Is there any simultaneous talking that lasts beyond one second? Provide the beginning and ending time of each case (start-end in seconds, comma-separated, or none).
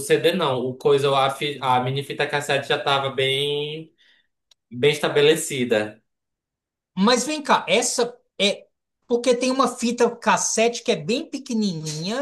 none